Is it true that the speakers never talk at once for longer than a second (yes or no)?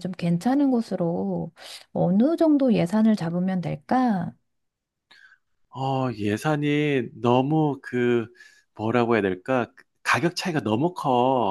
yes